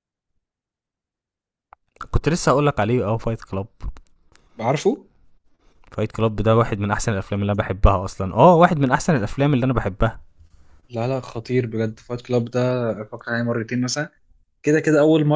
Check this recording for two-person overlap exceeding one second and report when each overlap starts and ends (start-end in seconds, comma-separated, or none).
none